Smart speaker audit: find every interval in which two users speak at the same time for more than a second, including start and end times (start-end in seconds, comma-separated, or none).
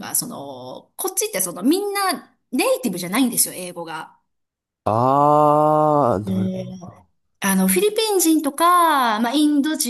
none